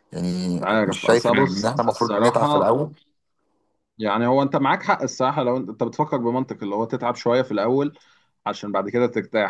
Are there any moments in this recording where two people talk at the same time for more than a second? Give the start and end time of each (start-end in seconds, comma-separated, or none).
0.6-2.8